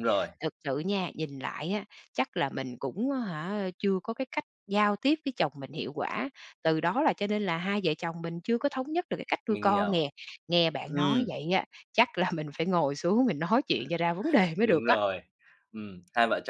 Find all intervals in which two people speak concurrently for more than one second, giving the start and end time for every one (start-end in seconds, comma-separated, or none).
none